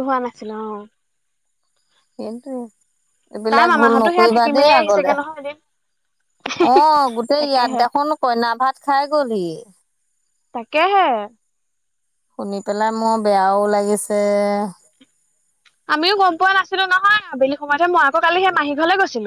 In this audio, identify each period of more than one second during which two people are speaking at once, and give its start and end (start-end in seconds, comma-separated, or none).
3.5-5.1